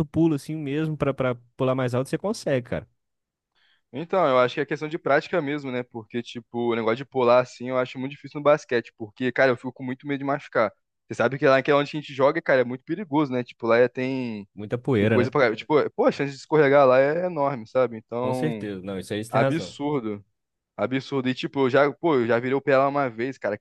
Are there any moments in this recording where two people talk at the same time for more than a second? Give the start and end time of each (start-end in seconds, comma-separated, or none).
none